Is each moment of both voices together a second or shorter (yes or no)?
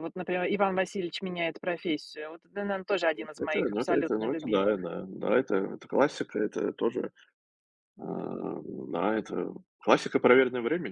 no